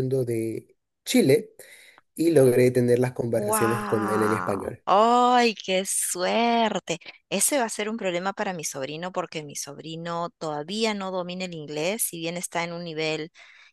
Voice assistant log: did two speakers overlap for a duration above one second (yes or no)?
yes